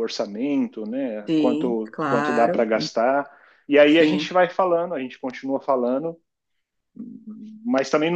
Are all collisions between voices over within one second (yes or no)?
no